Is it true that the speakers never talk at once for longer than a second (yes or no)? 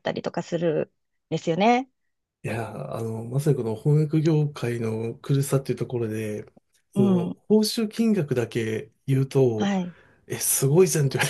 yes